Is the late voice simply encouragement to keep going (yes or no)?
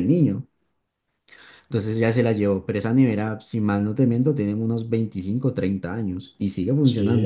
no